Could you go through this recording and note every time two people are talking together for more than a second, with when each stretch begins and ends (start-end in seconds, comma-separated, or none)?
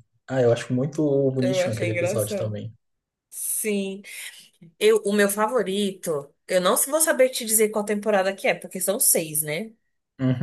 1.4-2.6